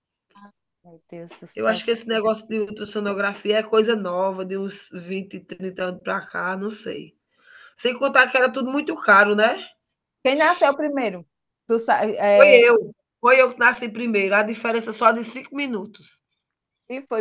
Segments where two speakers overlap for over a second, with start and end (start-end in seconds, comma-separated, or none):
1.5-2.7